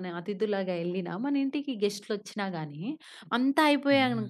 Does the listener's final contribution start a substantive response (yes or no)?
no